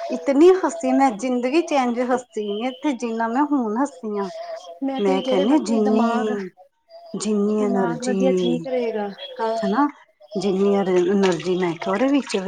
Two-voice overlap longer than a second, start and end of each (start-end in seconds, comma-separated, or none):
5.0-6.4